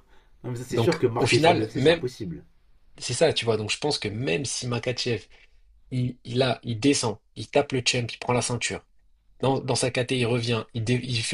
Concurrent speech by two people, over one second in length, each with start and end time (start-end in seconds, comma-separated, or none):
0.7-2.0